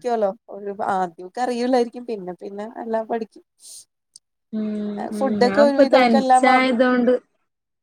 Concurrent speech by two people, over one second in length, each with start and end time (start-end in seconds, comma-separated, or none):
5.2-6.8